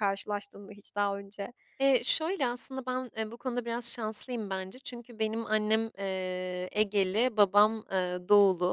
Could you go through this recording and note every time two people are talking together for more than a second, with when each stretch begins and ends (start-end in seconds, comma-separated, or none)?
none